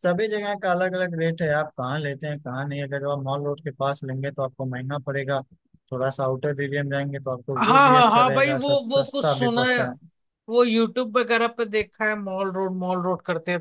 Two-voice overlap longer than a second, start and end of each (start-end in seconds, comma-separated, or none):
7.6-9.8